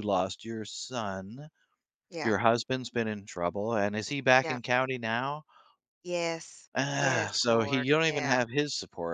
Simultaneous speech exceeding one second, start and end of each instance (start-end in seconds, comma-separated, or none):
6.8-8.4